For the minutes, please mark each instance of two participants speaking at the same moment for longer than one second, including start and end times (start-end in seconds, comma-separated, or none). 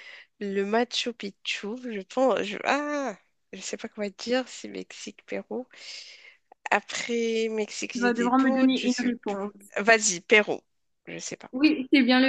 7.9-9.4